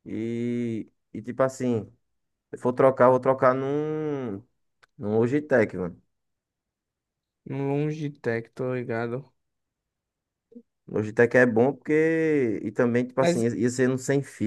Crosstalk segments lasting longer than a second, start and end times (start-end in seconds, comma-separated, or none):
none